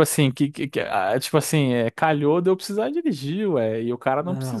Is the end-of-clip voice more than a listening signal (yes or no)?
yes